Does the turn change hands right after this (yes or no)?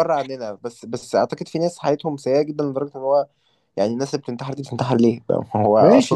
yes